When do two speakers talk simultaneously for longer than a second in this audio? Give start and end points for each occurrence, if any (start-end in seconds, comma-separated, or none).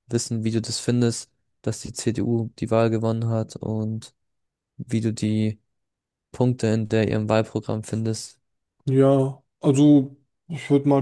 none